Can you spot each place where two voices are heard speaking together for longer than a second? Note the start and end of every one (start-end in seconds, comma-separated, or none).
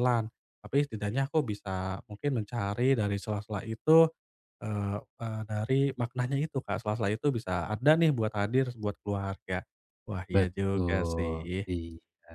10.3-11.6